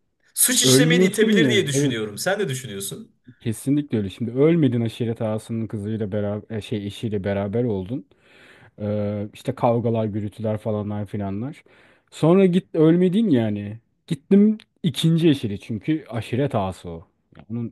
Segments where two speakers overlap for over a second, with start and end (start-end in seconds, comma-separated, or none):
0.6-2.0